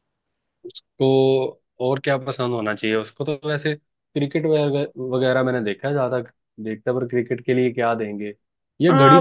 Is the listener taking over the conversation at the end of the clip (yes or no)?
yes